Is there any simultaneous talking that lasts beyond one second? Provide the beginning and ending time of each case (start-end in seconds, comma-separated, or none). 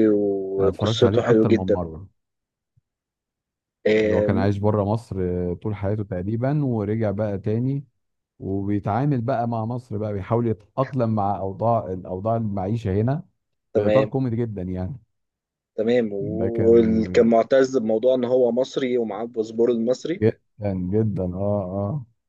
0.6-1.9